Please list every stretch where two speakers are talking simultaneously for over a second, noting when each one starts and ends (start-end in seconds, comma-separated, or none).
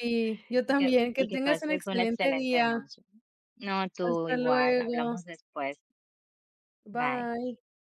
0.7-2.8, 4.0-5.2